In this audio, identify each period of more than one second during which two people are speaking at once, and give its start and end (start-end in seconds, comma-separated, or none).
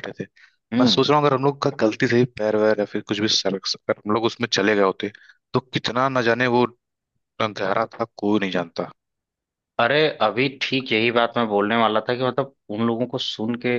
none